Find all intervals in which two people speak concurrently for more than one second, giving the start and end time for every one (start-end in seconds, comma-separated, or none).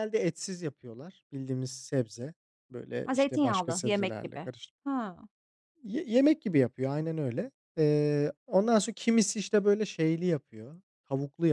3.0-4.5